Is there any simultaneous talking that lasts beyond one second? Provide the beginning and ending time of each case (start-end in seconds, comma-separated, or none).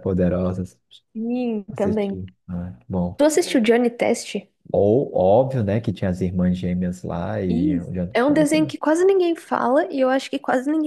7.5-8.7